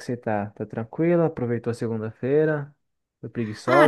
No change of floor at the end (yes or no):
no